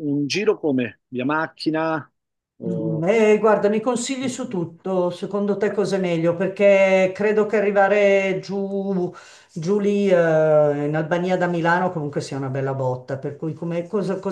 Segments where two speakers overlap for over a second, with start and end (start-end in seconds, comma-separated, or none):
none